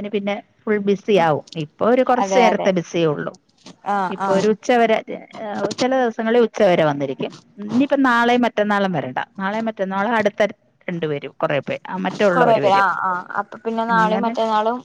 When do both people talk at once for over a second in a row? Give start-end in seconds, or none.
none